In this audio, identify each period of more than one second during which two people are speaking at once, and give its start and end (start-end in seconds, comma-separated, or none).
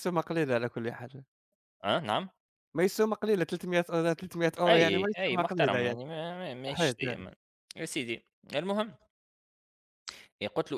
4.7-6.0